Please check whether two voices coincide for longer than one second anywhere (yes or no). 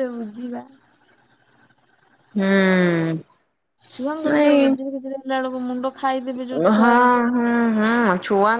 no